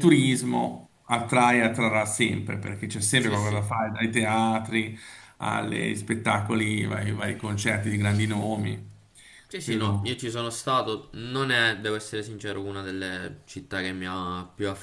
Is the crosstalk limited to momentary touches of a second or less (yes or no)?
yes